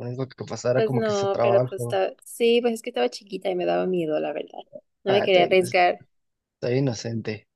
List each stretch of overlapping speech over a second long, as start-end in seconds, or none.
0.7-2.0